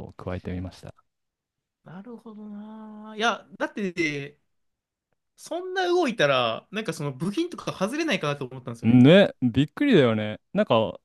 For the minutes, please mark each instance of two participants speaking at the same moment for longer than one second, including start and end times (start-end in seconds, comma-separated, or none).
none